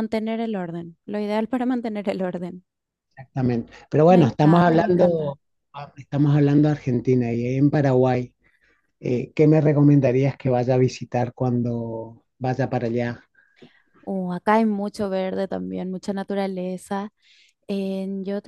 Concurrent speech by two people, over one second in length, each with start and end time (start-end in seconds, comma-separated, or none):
4.1-5.3